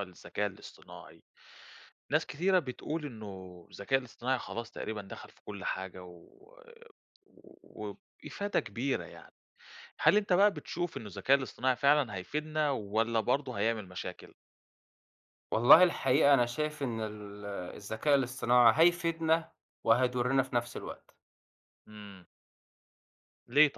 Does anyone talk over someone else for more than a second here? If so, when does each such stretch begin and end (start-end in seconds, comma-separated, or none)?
none